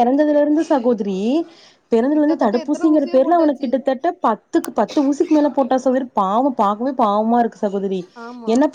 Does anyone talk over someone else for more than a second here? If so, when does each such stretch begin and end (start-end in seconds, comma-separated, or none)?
2.1-3.7